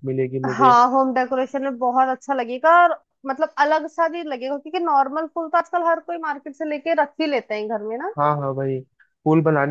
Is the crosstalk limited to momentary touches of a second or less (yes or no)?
yes